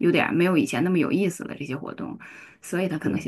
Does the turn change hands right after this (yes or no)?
no